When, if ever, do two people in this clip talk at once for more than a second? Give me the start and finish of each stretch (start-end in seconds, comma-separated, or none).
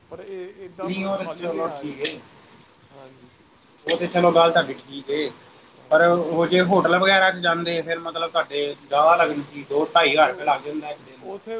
0.8-2.1